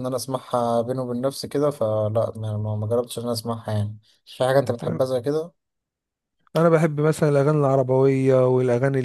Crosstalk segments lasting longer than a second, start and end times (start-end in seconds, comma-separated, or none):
none